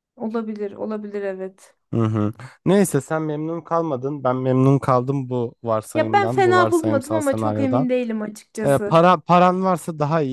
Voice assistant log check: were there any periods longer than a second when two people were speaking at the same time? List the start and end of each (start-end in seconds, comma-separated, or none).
5.9-7.9